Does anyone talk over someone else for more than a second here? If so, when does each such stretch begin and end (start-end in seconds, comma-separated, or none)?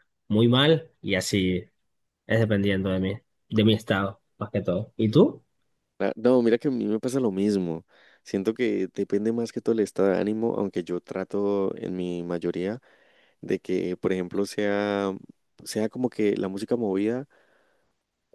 none